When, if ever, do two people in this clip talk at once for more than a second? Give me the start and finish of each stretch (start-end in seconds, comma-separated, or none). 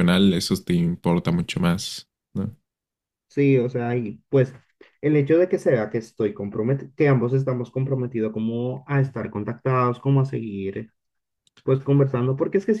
none